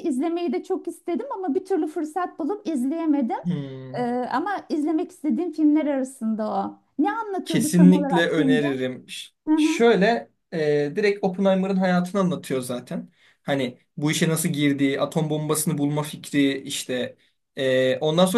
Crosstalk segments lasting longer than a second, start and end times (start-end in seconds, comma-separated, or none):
7.5-8.7